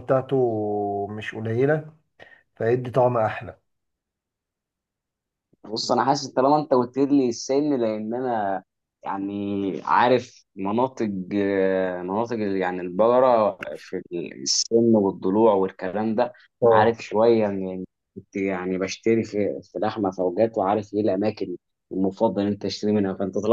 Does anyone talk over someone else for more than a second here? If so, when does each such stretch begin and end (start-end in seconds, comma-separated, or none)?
none